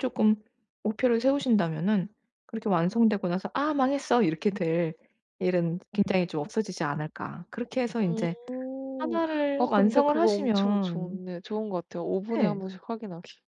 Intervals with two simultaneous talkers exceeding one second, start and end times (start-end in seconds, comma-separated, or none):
9.6-11.2